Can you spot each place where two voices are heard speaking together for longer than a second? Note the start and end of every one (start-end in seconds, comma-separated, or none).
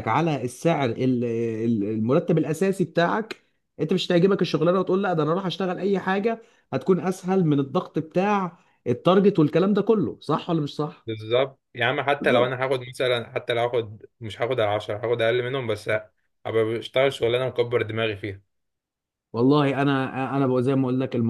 none